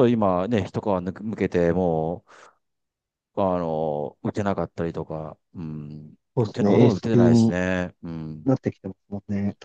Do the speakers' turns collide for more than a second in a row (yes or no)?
yes